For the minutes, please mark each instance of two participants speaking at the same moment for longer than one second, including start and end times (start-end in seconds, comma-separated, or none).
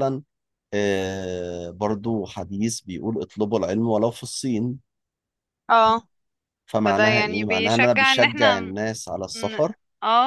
6.8-8.6